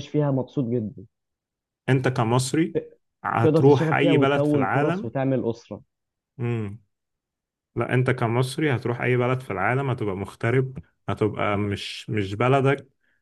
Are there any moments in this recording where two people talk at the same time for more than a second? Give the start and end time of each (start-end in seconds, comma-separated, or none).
3.4-5.1